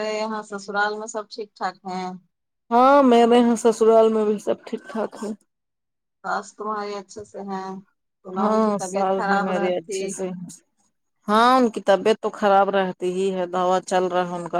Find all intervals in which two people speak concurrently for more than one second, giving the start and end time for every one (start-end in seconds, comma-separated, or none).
8.4-10.0